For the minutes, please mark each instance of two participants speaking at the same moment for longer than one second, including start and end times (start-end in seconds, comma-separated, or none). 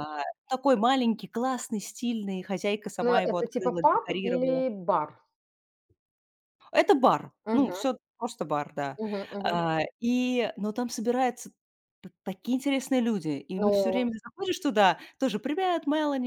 3.0-4.6